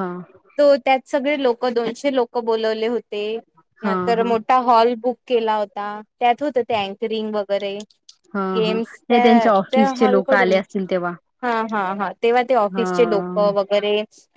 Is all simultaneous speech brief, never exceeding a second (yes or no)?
no